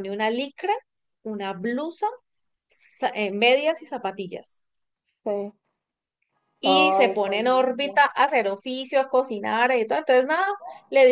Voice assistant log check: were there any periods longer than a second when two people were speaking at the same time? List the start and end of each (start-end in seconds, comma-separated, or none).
6.6-8.0